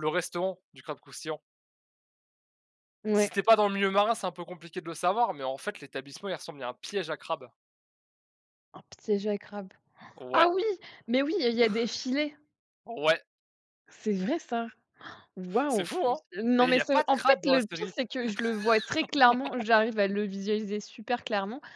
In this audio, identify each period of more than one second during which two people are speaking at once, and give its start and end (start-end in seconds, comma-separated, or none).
16.6-17.9